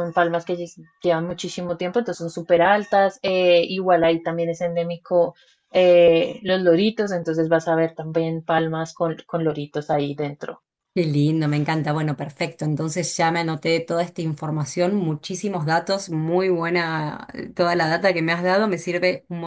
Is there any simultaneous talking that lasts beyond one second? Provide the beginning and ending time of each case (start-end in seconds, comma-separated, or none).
none